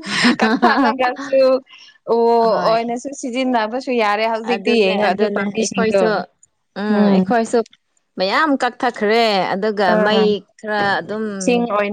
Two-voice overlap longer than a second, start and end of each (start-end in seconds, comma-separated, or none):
4.4-6.0